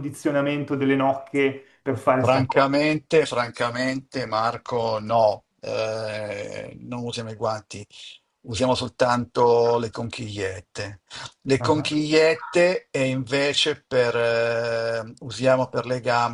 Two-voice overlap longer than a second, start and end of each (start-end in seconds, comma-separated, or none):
none